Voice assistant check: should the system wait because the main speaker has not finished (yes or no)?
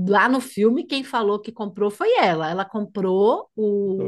yes